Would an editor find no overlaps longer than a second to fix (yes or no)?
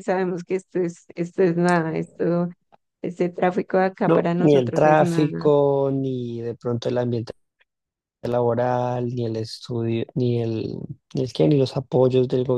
no